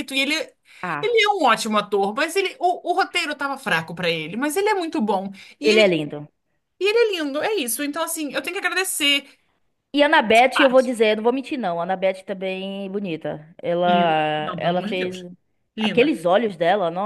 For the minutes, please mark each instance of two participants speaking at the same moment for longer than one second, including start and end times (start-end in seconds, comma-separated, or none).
13.8-15.2